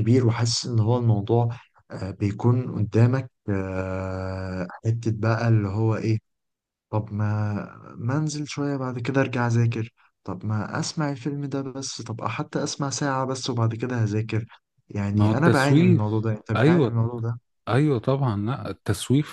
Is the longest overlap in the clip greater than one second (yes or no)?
yes